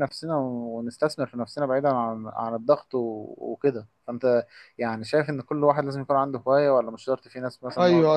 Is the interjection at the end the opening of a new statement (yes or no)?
yes